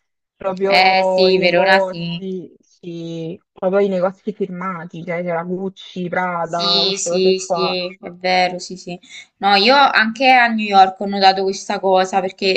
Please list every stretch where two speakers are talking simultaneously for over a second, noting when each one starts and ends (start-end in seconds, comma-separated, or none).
0.7-2.2, 6.4-7.8